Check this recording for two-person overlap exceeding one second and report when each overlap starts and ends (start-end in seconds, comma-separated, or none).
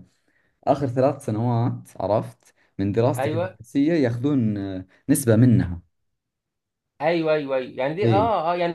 none